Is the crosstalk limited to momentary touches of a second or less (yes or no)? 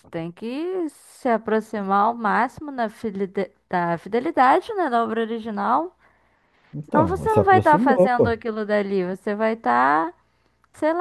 no